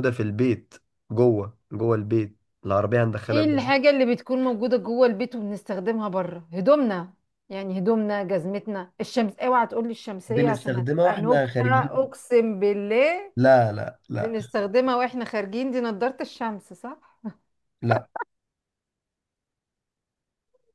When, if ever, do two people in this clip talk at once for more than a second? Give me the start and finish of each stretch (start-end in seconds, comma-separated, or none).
10.3-12.1